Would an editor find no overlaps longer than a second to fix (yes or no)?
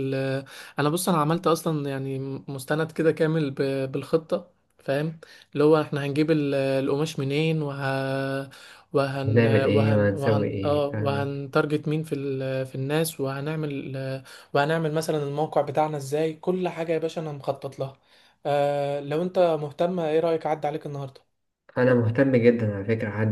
no